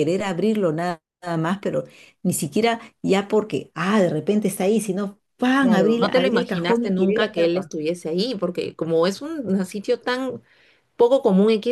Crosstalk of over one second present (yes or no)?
yes